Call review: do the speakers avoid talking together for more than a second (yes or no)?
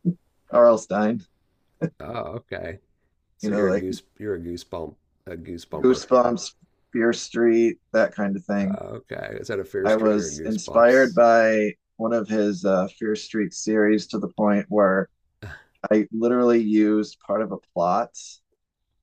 no